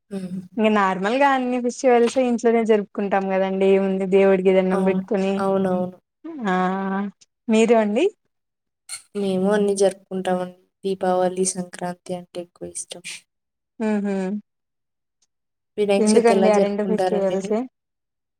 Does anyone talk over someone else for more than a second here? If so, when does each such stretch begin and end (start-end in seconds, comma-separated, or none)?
16.1-17.6